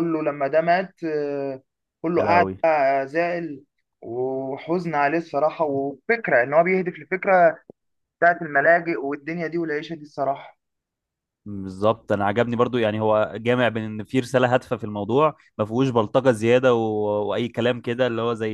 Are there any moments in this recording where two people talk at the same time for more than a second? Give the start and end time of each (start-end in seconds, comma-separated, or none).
none